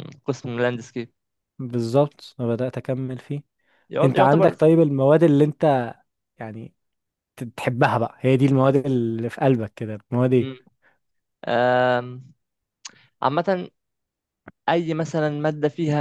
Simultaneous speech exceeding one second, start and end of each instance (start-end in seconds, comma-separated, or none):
none